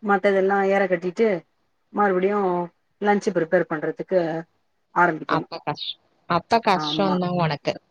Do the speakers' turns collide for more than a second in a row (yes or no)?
no